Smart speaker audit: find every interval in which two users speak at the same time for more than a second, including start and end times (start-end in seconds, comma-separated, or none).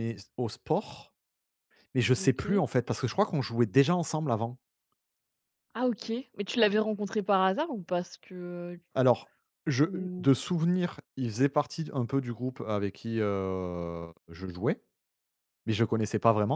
none